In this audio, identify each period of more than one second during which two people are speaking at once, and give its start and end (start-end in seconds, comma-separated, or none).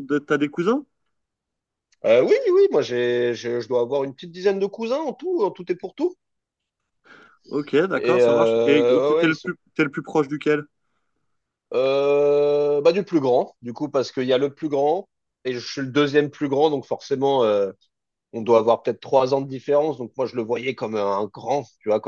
7.9-9.5